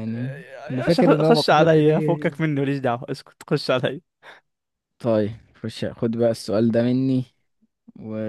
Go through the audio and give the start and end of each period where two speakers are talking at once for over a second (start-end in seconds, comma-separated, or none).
0.7-1.9